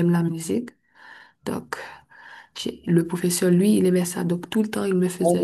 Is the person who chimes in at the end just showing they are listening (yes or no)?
no